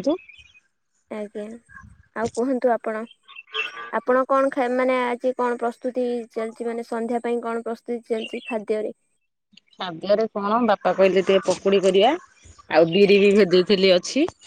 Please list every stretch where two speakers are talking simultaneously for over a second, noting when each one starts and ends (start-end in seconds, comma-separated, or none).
none